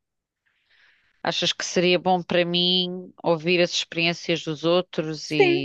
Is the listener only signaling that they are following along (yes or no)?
no